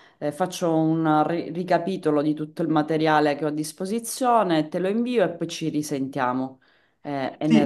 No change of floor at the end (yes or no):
no